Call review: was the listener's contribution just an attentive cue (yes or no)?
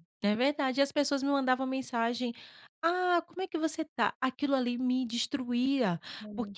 yes